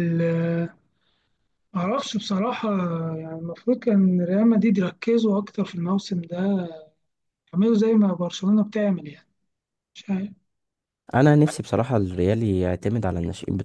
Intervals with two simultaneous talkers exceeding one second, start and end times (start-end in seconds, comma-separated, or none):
none